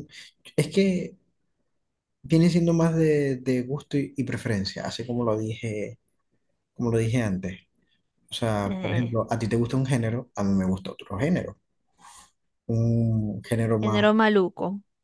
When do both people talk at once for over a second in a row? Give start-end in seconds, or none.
none